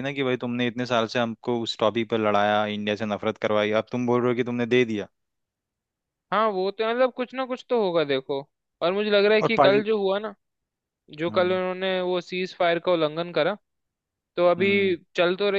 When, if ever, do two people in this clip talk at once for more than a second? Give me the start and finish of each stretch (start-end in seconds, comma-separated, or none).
none